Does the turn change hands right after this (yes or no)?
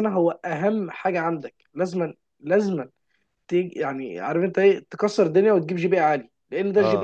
no